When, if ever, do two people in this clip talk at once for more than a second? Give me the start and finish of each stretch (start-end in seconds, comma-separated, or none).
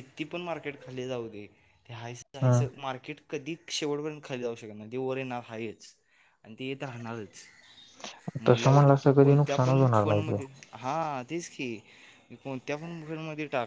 8.5-10.4